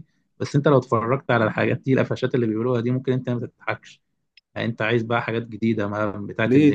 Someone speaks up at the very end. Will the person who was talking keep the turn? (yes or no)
no